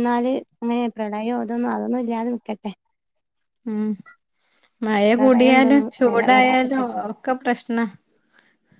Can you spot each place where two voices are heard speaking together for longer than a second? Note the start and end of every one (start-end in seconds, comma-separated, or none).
5.2-7.0